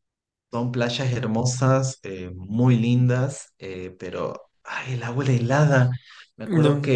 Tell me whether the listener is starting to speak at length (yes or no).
no